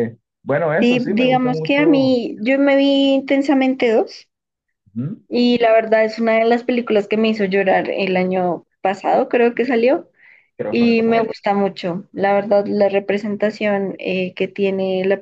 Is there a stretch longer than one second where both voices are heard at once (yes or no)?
yes